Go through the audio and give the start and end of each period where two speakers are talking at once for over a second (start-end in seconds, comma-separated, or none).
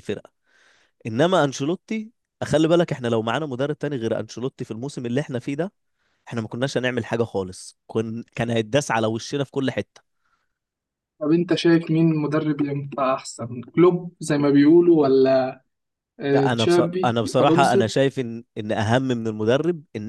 16.3-17.9